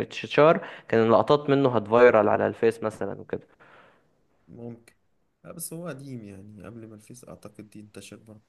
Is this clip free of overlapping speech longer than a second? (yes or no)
yes